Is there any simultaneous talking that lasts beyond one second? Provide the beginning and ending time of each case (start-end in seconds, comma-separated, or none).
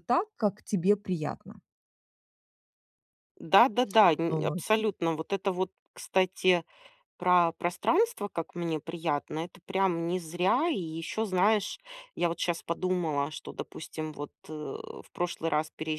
none